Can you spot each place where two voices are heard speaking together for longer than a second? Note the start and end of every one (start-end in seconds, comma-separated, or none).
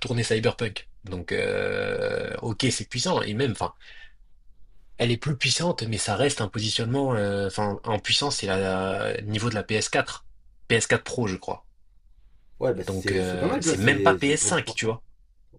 12.9-14.9